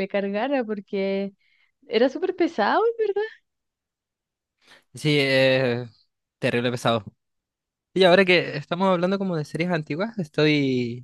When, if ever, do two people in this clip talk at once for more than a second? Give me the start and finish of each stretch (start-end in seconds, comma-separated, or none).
none